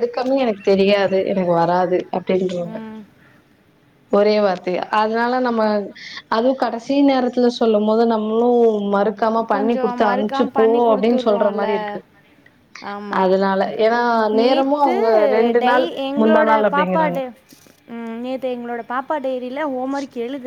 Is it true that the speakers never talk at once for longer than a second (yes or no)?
no